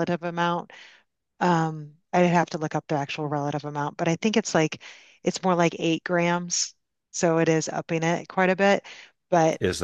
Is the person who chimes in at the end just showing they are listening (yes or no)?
no